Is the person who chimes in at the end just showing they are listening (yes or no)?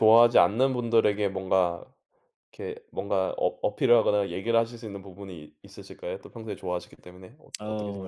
no